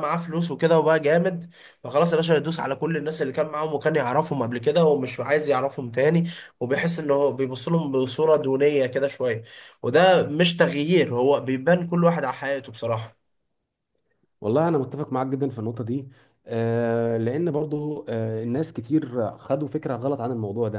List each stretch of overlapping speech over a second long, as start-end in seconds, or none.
none